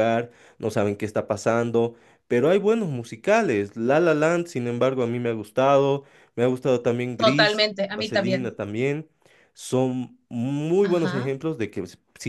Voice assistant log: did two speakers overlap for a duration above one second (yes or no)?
yes